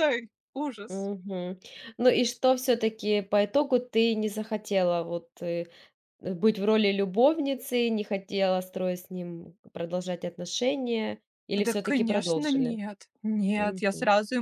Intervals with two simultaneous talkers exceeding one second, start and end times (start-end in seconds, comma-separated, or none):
11.6-12.8